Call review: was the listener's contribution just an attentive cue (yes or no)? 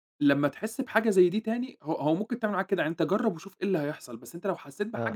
yes